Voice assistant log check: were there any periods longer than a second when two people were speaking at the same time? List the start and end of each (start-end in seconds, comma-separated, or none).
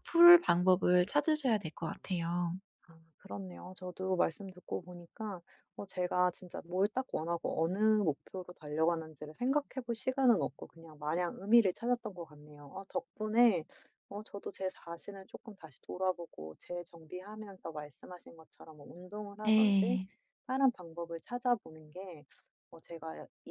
none